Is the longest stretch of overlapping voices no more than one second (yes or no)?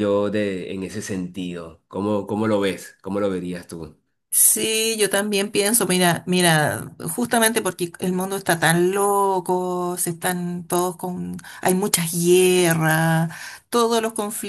yes